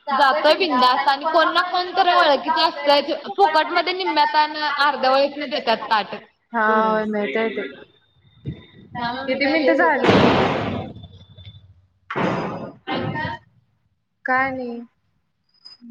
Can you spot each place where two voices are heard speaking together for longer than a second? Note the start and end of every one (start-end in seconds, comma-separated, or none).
9.3-10.5